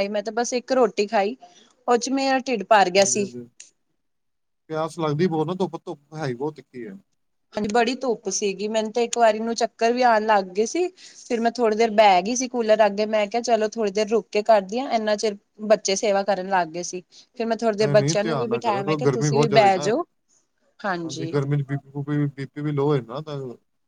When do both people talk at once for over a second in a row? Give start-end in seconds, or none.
17.8-19.7